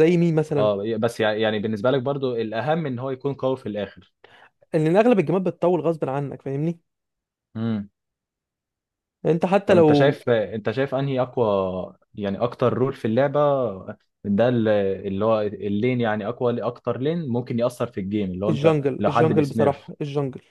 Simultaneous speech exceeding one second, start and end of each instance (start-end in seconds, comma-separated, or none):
18.5-19.9